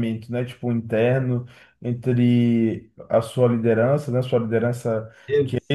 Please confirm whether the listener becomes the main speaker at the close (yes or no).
no